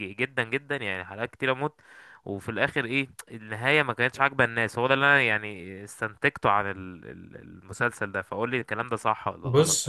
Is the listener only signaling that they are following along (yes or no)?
no